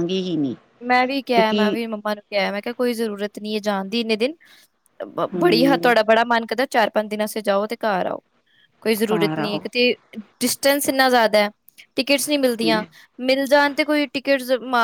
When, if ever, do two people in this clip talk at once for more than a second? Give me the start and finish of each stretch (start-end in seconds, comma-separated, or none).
none